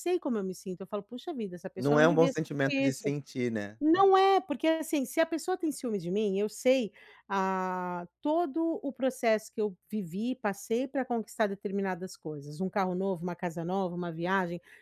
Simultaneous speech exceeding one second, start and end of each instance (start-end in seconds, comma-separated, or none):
1.8-3.1